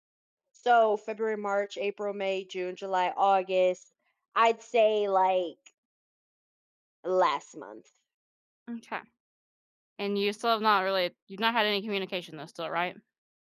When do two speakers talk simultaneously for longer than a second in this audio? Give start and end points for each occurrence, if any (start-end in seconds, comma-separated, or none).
none